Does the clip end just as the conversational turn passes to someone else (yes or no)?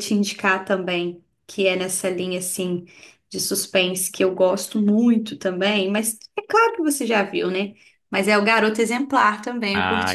yes